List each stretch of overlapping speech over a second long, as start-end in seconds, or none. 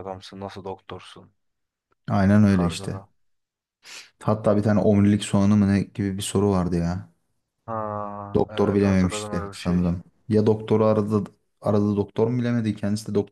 8.5-9.9